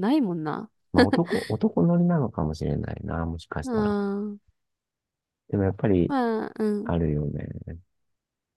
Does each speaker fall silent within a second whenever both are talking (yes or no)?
yes